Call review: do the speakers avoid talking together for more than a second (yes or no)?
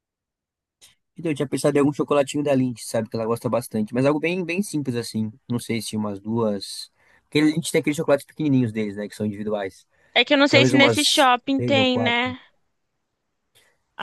no